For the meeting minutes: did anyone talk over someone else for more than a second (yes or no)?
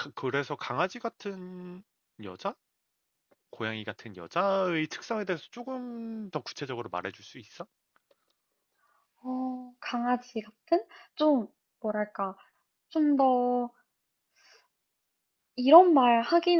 no